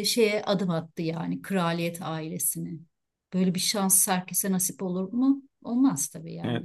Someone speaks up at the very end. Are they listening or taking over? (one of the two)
taking over